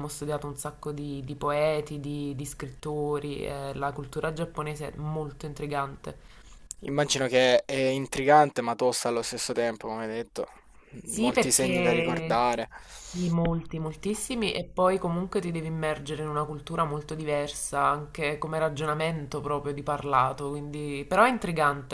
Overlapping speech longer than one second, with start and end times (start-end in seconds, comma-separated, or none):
11.1-12.4